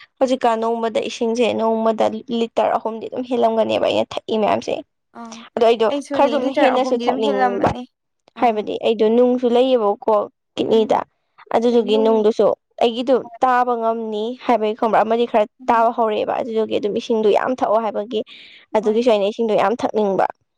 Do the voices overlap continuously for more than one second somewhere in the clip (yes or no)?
yes